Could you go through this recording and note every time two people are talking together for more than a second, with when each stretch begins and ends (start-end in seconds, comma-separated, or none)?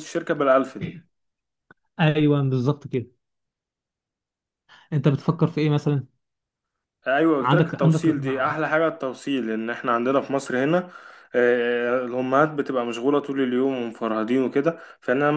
7.4-8.6